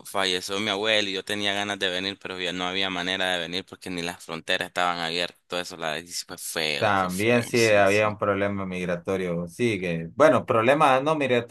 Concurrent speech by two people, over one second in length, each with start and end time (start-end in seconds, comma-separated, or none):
6.8-8.0